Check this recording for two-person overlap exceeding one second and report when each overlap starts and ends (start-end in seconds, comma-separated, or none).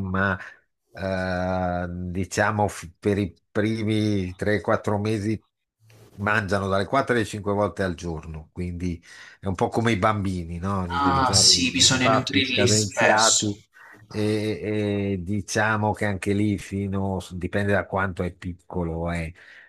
11.0-13.5